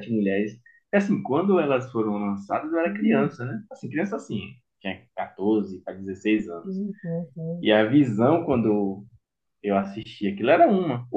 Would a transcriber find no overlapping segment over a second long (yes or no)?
yes